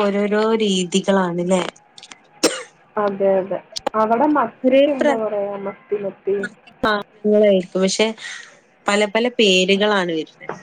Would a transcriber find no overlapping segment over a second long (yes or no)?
yes